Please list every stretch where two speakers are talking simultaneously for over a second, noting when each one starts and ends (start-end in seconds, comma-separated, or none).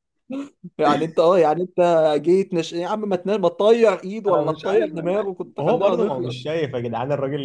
4.3-6.4